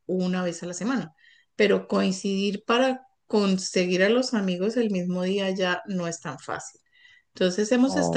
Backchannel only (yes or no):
yes